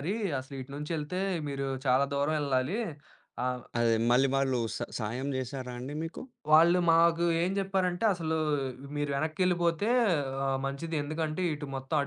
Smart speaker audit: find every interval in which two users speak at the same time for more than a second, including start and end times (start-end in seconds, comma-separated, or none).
none